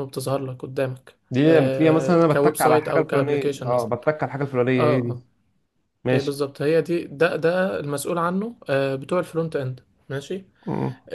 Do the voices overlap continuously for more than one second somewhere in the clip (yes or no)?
yes